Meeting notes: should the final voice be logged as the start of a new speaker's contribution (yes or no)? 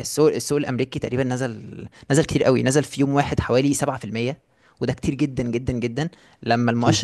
no